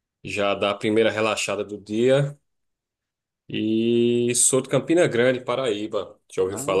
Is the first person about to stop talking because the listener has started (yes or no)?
yes